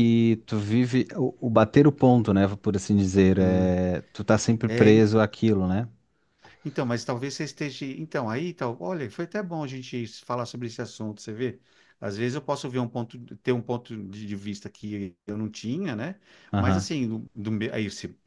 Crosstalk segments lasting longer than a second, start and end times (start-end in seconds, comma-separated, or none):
none